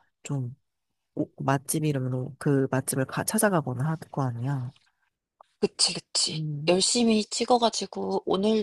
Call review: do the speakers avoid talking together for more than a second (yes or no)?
yes